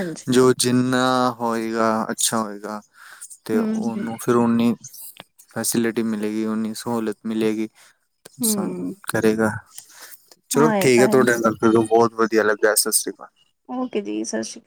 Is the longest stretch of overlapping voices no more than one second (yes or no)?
yes